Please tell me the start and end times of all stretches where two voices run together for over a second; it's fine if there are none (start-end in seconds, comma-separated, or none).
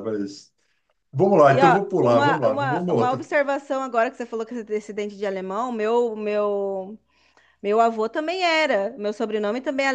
1.5-3.2